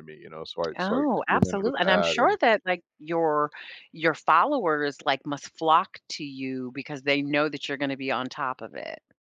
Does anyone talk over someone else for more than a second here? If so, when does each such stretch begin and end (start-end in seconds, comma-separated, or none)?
0.8-2.4